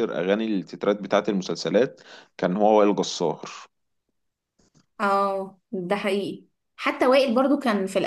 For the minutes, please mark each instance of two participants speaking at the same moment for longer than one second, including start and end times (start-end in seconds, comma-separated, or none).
none